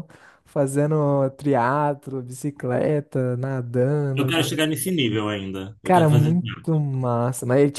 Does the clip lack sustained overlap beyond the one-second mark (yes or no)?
yes